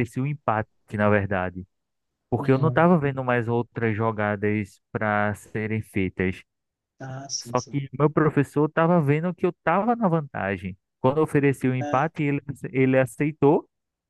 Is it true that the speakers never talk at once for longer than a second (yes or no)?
yes